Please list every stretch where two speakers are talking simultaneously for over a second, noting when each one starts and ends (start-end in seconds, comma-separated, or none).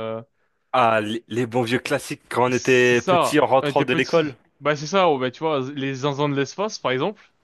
2.5-4.3